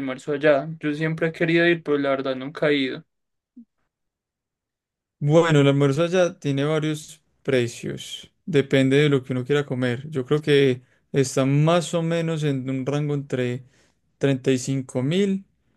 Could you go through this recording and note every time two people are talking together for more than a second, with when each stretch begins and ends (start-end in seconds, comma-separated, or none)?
none